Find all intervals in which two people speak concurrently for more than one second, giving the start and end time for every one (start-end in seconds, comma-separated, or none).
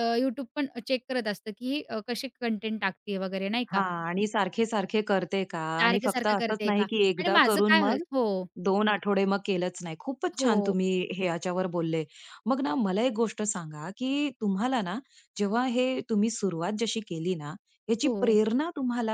5.8-8.0